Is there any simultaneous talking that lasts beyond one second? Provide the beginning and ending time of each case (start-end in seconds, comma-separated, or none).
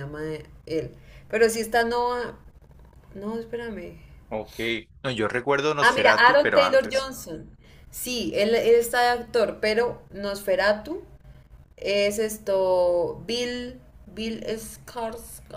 5.8-7.1